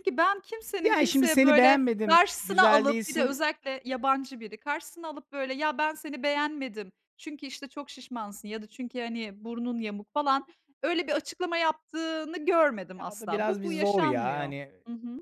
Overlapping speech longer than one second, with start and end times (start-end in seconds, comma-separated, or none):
0.8-3.4, 13.0-14.7